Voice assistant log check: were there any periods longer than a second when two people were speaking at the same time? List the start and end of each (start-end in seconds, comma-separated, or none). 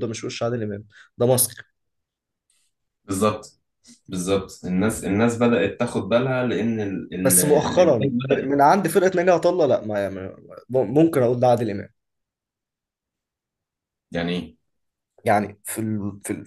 7.2-8.5